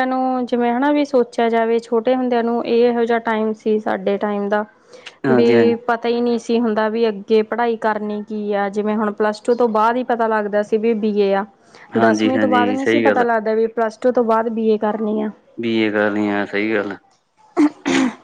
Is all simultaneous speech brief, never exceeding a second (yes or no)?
no